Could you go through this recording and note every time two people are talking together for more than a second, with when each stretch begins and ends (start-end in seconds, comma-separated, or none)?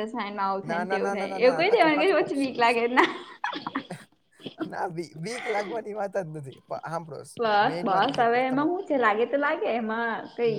0.7-2.7